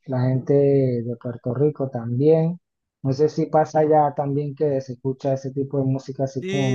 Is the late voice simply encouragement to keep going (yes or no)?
no